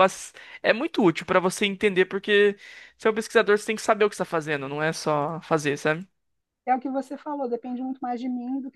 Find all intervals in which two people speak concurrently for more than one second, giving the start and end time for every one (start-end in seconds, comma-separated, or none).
none